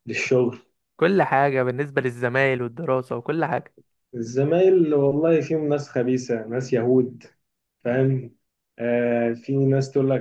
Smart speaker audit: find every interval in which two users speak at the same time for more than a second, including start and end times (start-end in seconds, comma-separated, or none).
none